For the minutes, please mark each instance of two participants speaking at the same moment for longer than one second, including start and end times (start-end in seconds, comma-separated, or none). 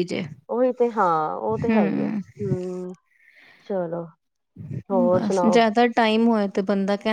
none